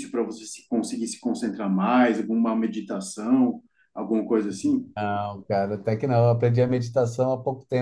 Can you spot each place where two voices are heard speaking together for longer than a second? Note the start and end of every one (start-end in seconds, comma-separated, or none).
none